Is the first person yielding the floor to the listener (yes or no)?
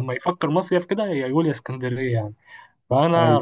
no